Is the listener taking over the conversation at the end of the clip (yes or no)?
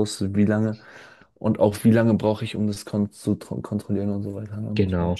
yes